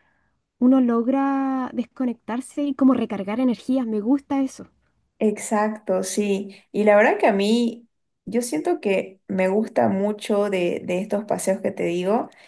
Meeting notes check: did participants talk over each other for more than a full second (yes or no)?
no